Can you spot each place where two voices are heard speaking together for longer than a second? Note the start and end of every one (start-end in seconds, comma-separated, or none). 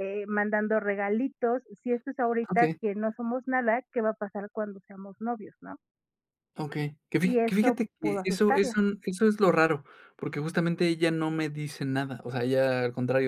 7.2-8.8